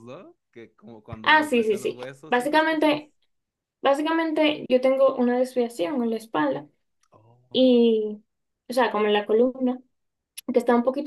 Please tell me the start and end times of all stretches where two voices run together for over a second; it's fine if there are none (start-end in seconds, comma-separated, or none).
1.2-3.0